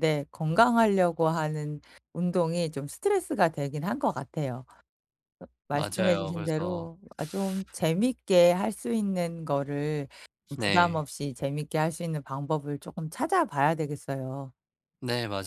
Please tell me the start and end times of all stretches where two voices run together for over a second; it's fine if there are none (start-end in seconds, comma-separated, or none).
5.7-6.9